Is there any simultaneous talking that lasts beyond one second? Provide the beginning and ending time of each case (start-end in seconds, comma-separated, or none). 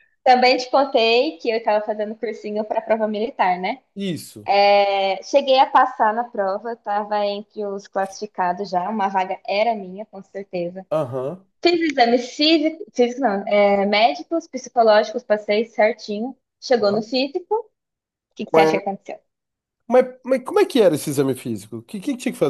none